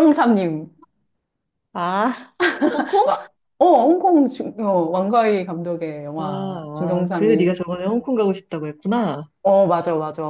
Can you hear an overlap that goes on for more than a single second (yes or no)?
yes